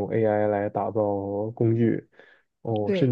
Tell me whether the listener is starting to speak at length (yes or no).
no